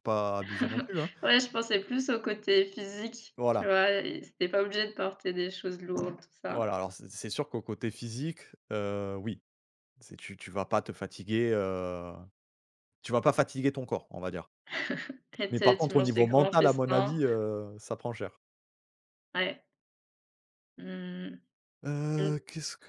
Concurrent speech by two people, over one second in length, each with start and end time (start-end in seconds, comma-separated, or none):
15.5-17.2